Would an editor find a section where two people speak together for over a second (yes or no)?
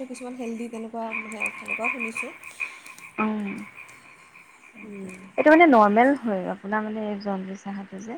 no